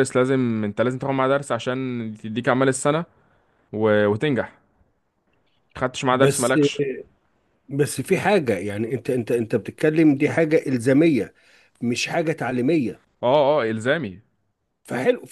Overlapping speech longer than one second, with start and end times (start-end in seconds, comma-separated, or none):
none